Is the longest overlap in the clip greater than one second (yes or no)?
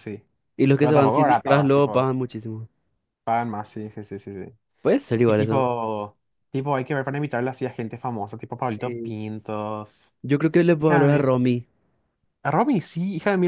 yes